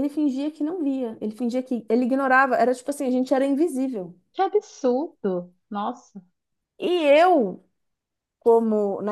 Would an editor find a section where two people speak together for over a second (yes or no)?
no